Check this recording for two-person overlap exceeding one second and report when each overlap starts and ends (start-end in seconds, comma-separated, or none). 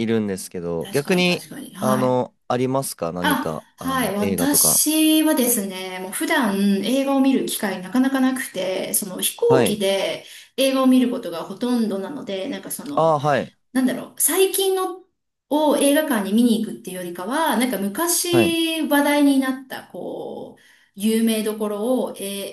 0.8-2.2, 3.2-4.8